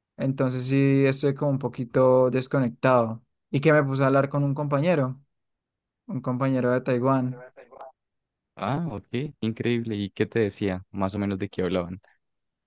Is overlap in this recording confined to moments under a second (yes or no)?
yes